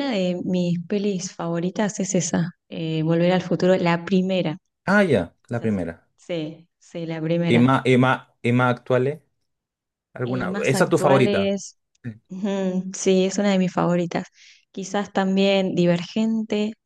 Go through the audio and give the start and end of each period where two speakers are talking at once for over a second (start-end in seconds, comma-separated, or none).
10.2-11.5